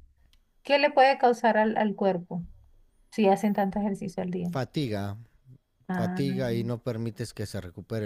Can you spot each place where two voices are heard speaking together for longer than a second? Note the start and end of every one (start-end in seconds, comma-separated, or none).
none